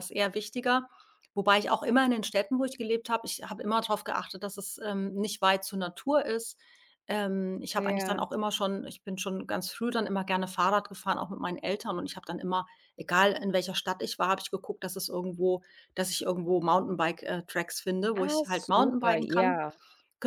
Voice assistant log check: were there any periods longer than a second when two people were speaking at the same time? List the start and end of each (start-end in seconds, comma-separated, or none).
18.2-19.6